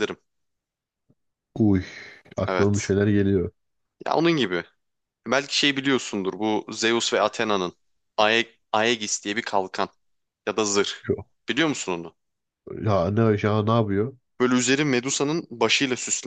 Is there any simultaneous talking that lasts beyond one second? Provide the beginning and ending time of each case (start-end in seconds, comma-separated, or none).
none